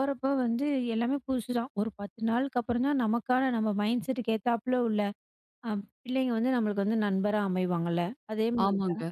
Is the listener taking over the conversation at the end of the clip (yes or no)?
no